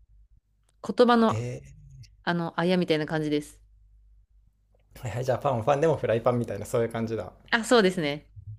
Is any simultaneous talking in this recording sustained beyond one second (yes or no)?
no